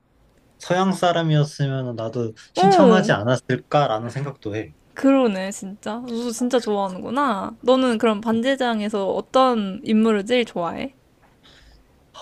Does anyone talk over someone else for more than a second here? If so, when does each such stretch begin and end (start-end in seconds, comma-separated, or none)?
none